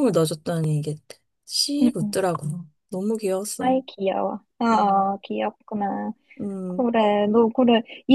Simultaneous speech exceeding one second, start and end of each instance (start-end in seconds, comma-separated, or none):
none